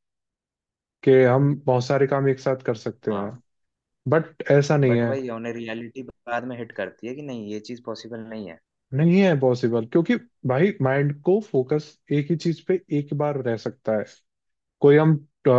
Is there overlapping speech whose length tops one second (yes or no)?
no